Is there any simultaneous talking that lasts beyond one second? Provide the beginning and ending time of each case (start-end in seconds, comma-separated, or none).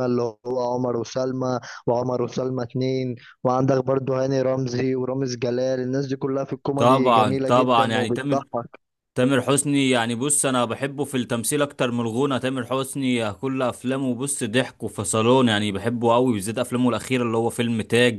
6.8-8.4